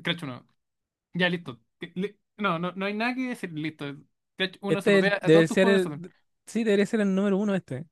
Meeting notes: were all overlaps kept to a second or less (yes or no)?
no